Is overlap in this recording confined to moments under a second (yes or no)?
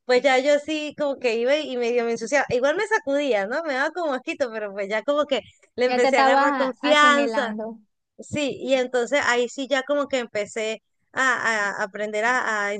no